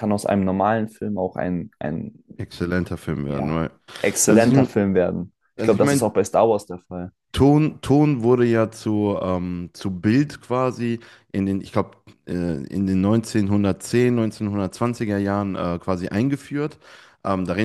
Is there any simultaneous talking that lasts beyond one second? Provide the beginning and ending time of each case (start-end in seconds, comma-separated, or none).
none